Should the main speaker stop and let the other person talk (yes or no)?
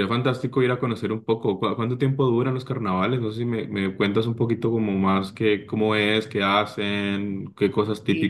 yes